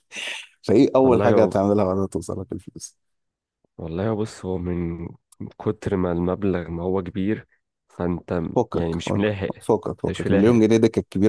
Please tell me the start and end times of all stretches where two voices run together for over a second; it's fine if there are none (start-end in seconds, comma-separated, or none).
8.5-10.6